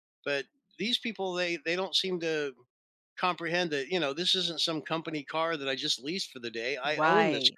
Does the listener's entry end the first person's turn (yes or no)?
yes